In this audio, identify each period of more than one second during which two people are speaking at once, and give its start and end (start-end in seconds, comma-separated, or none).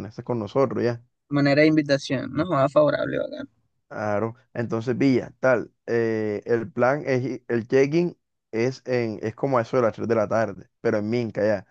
none